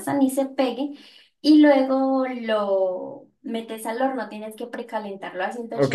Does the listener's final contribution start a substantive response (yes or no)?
yes